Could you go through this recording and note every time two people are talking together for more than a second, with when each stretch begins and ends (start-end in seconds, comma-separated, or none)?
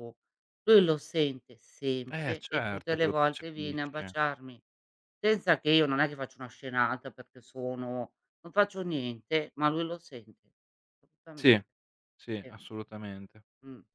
2.1-4.2